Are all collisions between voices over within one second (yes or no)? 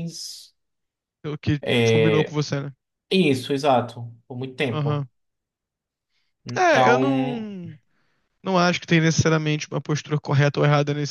yes